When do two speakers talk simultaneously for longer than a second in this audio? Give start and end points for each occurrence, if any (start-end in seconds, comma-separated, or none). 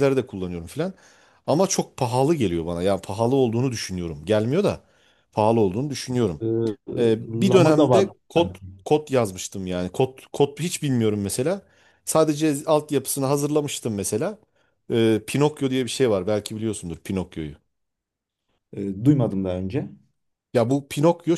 7.3-8.6